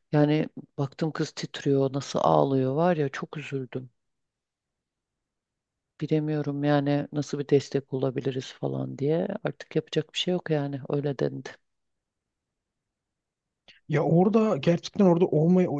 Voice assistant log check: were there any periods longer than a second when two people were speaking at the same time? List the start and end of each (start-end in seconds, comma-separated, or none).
none